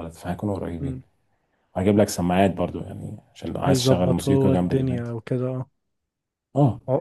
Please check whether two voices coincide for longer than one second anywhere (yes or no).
yes